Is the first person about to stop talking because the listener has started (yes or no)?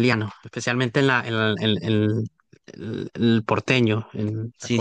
yes